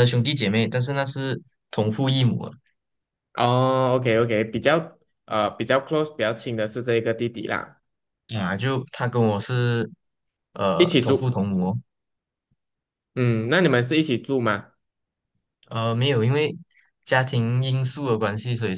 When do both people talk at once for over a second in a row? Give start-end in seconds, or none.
none